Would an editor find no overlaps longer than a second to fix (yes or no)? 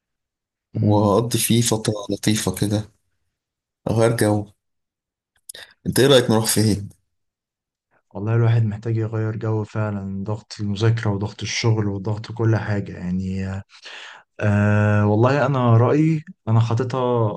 yes